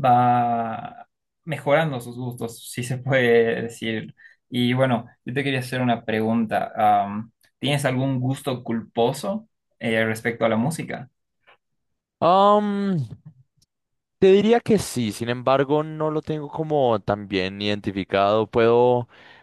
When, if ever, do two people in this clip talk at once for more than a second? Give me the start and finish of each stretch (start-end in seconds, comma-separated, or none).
none